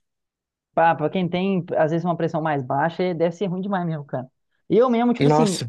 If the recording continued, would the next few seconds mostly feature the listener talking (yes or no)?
no